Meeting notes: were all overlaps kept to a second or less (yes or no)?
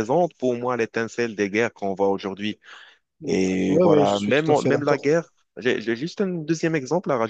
no